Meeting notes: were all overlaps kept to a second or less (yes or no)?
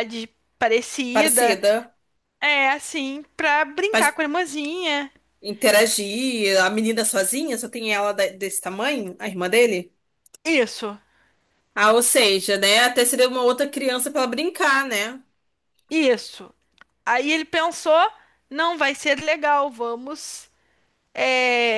yes